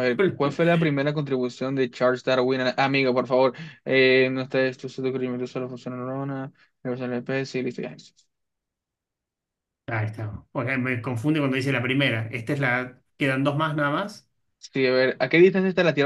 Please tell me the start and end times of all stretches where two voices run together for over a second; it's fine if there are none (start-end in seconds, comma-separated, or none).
none